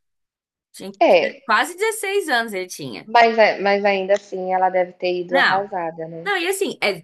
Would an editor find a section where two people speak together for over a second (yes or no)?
no